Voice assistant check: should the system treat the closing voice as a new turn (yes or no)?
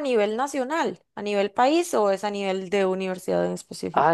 yes